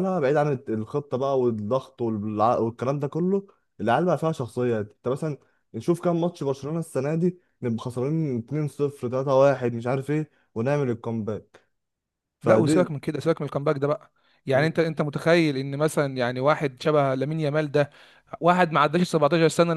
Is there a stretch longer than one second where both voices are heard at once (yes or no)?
no